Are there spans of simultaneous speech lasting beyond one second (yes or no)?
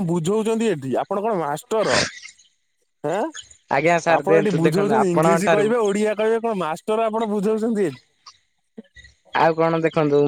yes